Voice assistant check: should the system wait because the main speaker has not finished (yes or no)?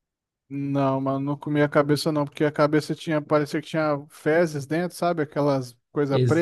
no